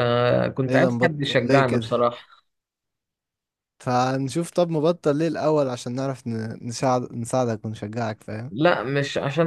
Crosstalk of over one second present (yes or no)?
yes